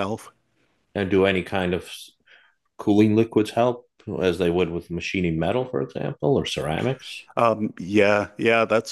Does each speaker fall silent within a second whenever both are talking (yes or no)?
yes